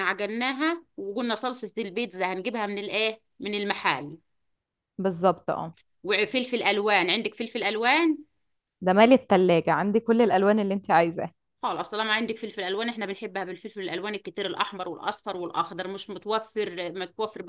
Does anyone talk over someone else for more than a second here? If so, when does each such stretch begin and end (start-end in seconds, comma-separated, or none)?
none